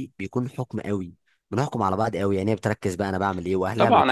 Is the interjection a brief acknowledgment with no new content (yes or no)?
no